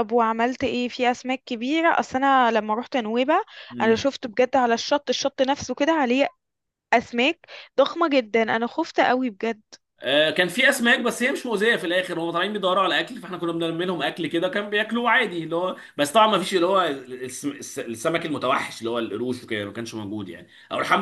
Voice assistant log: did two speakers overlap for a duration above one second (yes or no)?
no